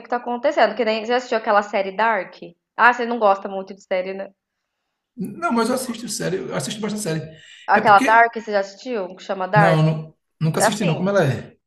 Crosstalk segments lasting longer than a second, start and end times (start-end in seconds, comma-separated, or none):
none